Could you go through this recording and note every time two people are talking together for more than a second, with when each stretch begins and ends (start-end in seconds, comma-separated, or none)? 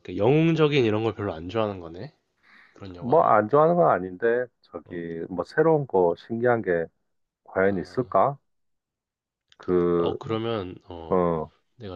none